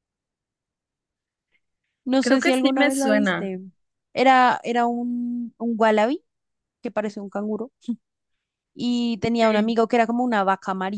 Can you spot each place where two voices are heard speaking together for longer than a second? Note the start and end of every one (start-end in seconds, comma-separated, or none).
2.2-3.5